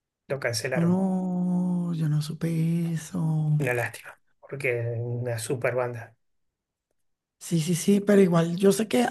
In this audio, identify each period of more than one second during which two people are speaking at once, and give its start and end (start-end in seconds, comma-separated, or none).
none